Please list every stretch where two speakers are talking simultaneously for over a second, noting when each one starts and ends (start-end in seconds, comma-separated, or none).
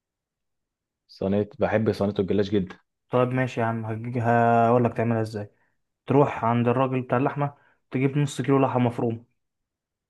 none